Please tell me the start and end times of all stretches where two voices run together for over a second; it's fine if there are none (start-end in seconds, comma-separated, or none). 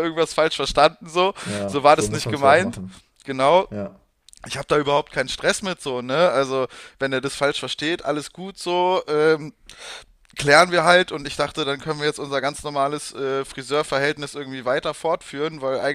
1.4-2.8